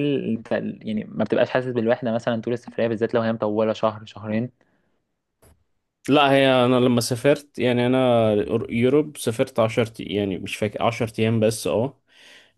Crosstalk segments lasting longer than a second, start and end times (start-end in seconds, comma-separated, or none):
none